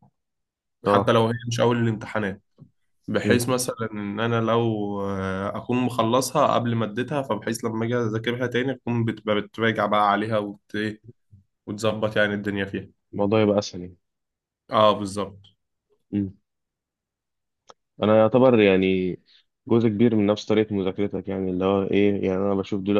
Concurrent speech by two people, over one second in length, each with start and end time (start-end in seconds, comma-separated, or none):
none